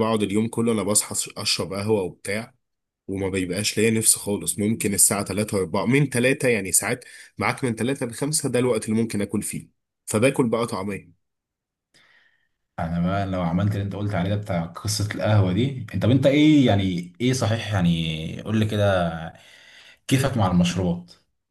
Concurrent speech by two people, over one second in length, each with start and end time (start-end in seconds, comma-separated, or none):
none